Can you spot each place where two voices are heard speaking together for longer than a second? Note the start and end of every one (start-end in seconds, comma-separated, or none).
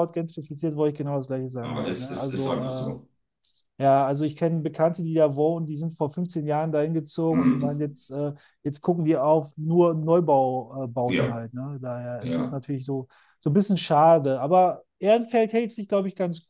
1.6-2.9